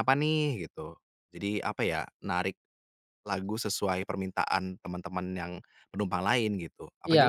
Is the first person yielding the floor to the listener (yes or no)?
yes